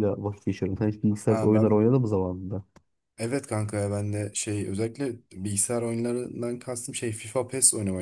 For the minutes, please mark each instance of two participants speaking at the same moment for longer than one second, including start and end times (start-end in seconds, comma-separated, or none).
none